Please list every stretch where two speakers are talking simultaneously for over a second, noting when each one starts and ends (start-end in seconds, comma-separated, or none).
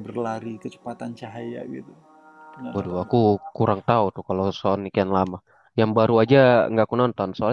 none